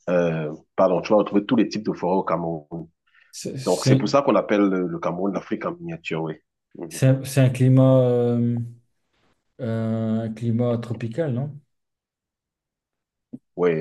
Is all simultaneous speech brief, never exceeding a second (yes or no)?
yes